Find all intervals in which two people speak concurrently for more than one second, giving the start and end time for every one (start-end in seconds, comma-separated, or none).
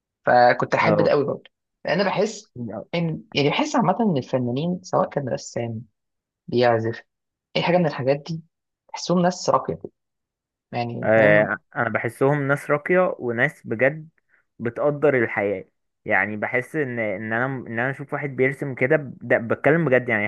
none